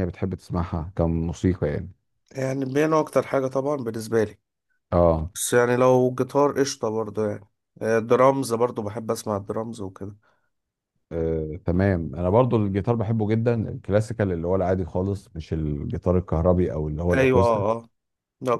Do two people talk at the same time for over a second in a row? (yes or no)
no